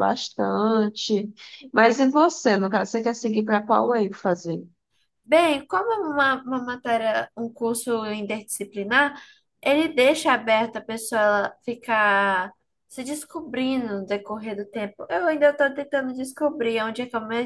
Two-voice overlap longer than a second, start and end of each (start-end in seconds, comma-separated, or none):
none